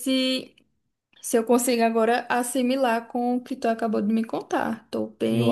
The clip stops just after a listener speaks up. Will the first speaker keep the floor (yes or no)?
no